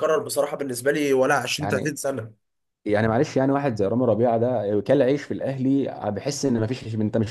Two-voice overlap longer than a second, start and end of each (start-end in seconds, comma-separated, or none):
none